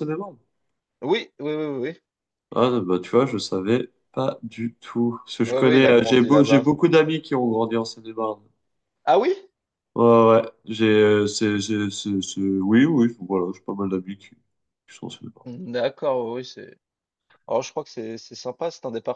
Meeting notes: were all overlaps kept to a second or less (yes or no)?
no